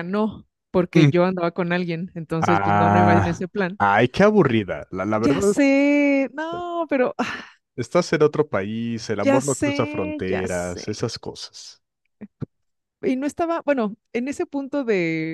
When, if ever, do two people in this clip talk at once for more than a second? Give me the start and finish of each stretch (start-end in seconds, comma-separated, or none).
2.4-3.8, 9.2-10.8